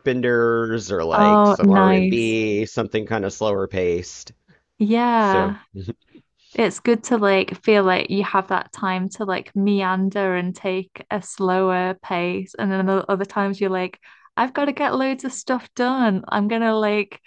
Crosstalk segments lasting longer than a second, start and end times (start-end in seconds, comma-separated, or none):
1.1-2.4